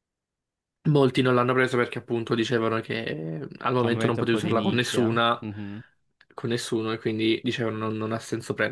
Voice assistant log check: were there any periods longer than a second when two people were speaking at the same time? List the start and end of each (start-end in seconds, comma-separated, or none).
3.8-5.4